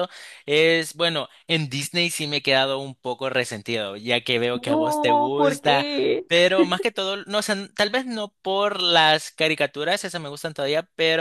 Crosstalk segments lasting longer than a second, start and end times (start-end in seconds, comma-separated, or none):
4.5-5.9